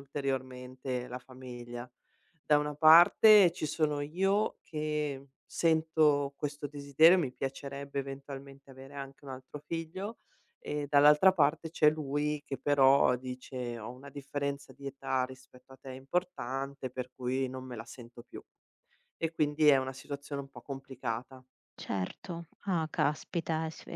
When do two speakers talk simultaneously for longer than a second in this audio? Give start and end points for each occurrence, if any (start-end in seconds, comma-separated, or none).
none